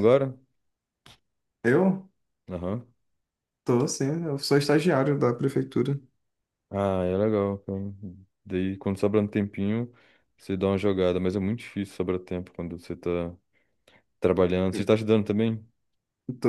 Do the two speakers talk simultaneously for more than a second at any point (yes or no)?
no